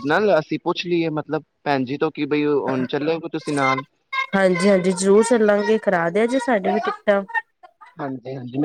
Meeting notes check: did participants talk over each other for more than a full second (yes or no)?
no